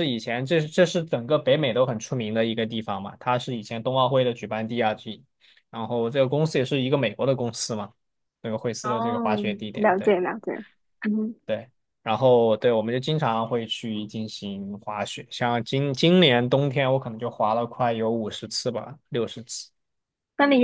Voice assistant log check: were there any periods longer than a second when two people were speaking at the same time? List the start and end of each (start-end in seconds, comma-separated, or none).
8.8-10.2